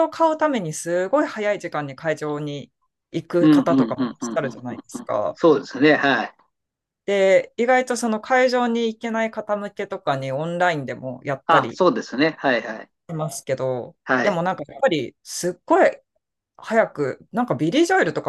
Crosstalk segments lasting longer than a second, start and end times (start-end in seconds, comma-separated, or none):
3.4-5.4